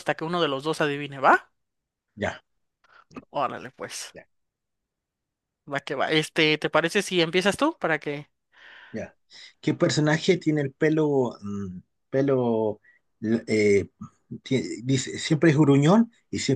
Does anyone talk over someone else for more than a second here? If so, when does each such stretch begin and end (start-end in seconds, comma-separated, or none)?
none